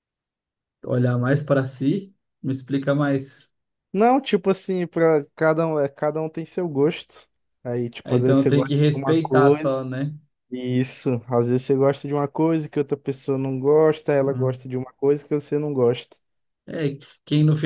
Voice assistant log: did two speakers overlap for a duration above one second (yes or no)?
yes